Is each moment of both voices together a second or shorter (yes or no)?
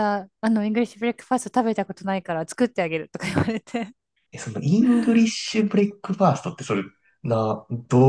yes